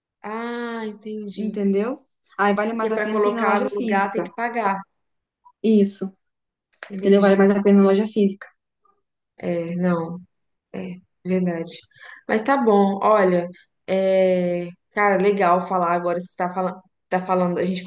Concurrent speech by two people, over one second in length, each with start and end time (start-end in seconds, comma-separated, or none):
2.7-4.3